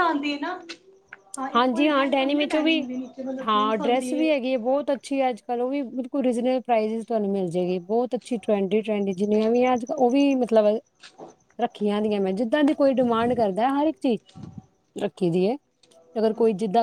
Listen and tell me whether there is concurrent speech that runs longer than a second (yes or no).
yes